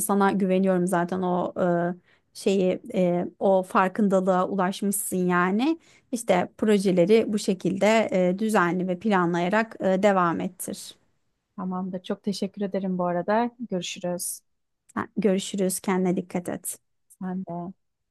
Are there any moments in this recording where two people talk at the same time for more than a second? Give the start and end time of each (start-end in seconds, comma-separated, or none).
none